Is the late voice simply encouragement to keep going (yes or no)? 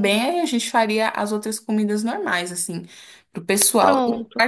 yes